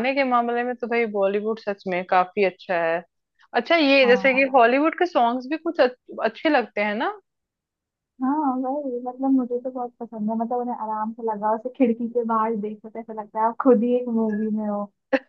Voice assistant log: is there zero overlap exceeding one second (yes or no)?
yes